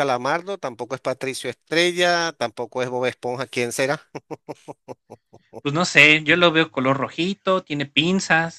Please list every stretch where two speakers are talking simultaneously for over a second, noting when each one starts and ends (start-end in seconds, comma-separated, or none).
none